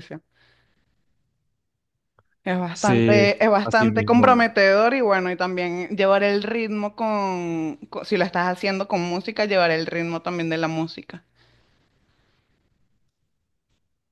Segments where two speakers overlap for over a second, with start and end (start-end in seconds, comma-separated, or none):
2.7-4.4